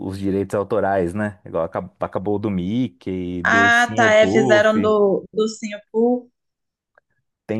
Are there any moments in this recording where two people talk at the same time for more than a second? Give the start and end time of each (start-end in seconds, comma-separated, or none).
3.4-4.8